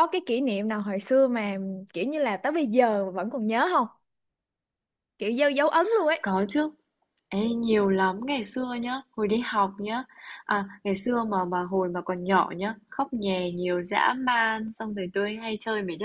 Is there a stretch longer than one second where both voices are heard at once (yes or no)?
no